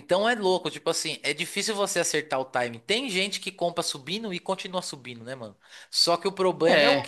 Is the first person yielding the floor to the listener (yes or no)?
no